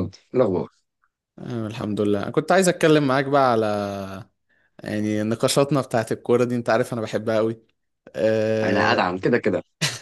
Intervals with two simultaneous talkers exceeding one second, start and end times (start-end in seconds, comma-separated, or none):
none